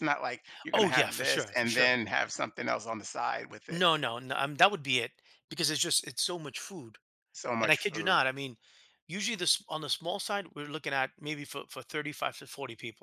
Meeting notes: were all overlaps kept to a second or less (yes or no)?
no